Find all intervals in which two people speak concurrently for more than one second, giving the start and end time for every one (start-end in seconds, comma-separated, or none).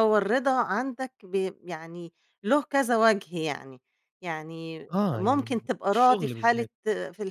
4.9-6.7